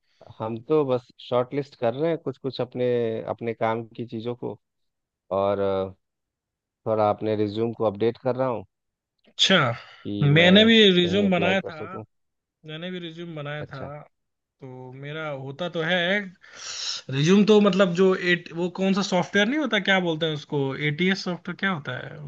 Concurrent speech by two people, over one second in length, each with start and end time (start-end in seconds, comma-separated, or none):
10.2-11.8